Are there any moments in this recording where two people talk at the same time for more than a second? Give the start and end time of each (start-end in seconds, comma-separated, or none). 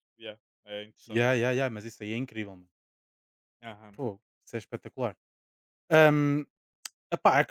none